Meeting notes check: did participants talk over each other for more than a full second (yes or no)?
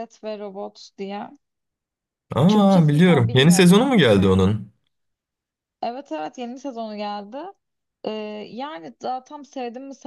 yes